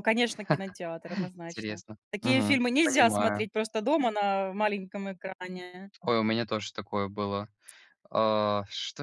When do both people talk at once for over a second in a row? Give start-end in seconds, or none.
1.5-3.5